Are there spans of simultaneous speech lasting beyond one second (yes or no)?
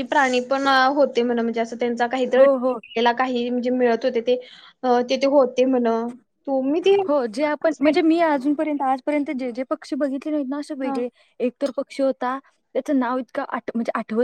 no